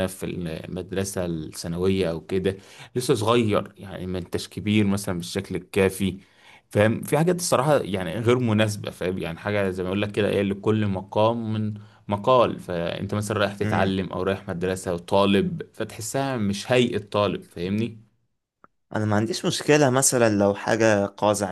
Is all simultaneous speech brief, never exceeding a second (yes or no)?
yes